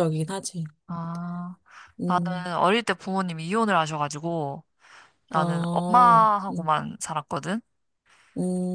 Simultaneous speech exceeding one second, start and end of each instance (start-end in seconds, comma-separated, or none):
5.3-6.7